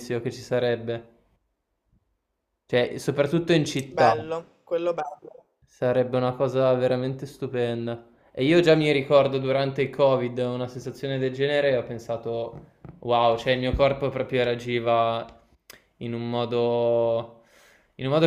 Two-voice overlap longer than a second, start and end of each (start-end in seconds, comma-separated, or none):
none